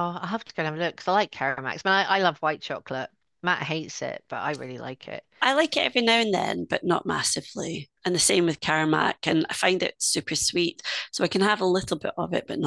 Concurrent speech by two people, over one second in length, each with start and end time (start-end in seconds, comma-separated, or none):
none